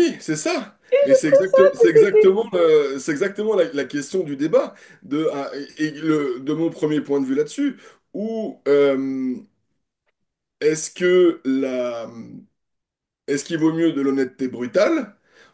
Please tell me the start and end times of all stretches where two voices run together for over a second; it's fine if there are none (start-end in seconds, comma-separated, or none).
0.9-2.4